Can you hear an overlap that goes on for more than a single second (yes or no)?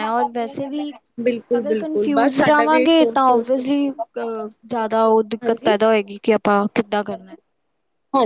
yes